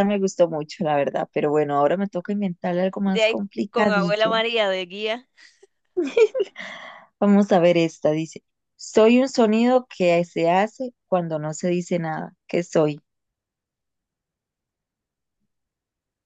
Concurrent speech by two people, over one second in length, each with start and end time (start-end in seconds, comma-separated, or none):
3.0-4.4